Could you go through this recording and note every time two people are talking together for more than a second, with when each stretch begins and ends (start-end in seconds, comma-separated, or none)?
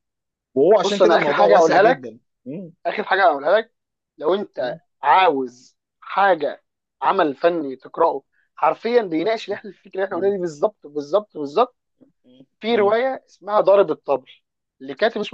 0.8-2.1